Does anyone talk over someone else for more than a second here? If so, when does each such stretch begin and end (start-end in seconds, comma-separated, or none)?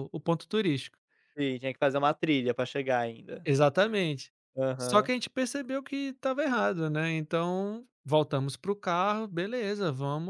none